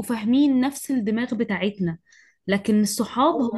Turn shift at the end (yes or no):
no